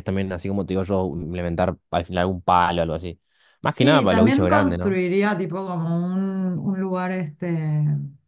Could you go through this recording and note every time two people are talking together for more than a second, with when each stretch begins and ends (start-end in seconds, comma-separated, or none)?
3.6-5.0